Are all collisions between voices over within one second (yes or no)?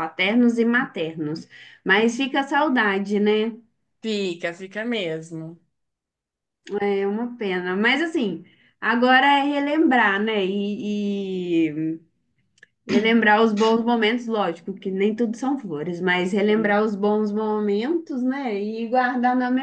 yes